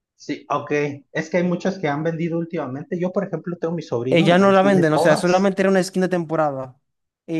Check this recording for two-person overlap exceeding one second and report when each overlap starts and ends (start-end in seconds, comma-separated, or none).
4.1-5.5